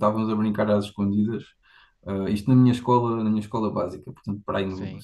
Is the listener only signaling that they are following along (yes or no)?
yes